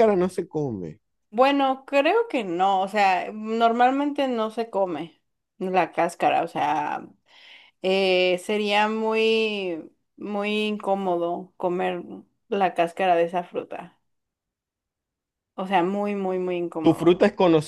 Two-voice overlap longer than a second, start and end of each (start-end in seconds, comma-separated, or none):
none